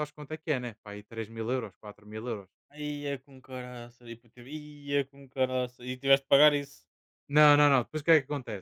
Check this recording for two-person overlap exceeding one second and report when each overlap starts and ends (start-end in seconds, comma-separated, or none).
none